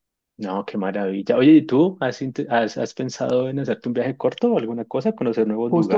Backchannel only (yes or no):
no